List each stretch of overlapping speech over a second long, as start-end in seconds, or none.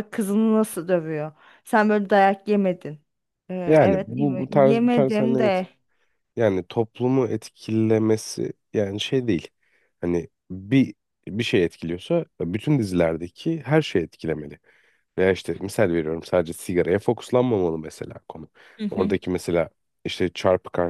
3.6-5.6